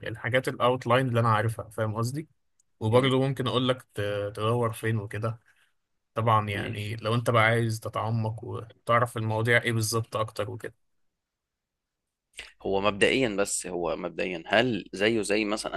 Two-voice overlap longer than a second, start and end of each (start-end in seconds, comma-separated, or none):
none